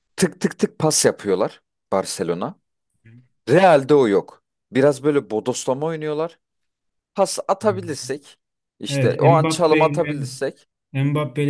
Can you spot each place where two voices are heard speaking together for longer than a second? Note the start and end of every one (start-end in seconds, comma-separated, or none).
8.9-10.2